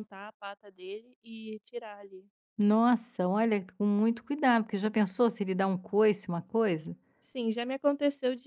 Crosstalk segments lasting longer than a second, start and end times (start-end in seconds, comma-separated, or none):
none